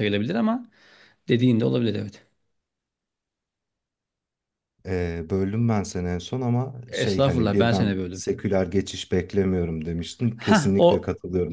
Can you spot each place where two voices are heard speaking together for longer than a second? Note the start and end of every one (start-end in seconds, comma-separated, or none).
6.9-8.2